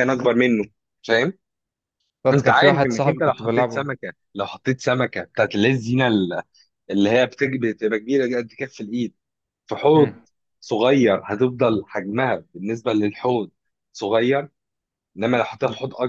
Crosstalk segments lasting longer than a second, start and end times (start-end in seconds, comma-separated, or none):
2.4-3.9